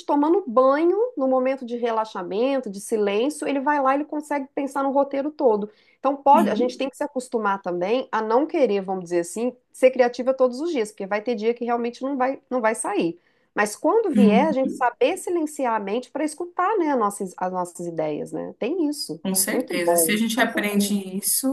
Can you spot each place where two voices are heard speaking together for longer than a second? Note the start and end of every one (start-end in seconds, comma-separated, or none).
19.2-21.0